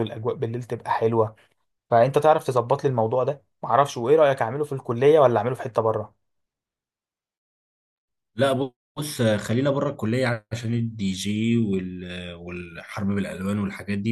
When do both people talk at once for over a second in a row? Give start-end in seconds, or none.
none